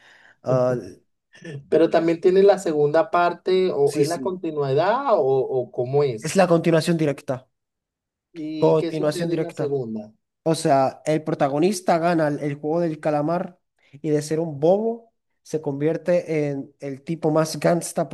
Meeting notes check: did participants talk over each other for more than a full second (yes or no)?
yes